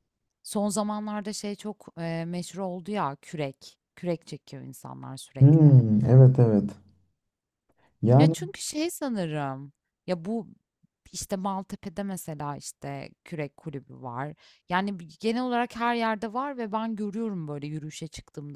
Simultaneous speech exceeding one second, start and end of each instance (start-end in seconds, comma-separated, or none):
none